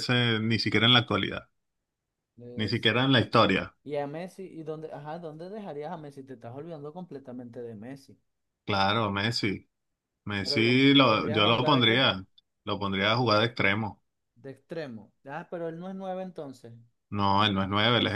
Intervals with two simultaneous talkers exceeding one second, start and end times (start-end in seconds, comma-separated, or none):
10.4-12.1